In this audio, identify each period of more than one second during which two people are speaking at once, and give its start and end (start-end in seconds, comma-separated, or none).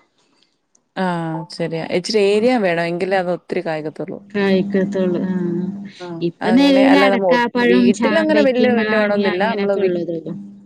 6.3-9.9